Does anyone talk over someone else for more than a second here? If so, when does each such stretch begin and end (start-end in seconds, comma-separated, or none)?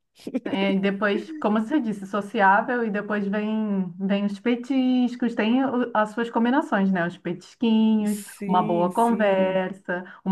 8.0-9.6